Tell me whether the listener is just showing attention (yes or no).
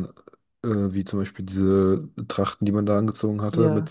yes